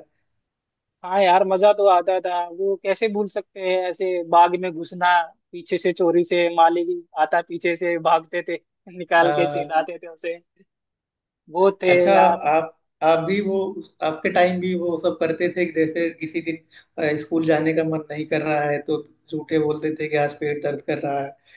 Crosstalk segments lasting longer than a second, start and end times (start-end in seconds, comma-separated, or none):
none